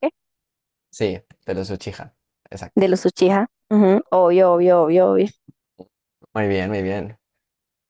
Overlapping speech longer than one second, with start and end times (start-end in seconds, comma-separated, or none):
none